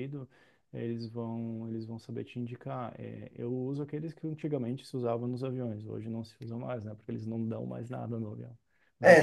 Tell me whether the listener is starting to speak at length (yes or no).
no